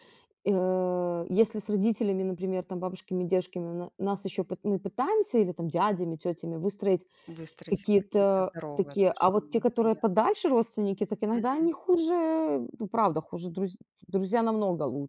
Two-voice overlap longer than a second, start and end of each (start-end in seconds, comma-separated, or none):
7.7-10.2